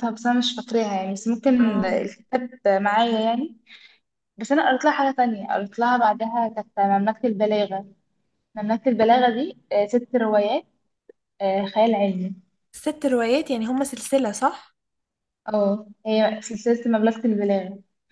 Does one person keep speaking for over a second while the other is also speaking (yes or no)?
no